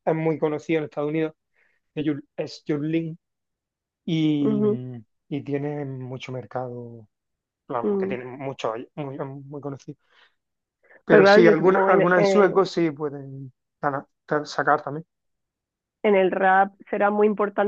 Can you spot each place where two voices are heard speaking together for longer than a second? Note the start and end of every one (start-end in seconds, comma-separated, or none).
11.1-12.6